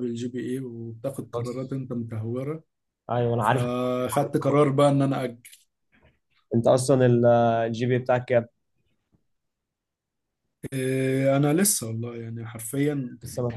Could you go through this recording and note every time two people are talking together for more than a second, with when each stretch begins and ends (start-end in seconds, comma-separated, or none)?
none